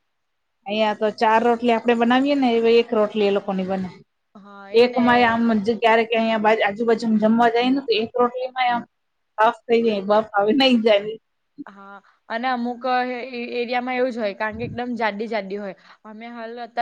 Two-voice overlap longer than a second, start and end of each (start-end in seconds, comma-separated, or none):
none